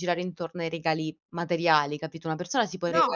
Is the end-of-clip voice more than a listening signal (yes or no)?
no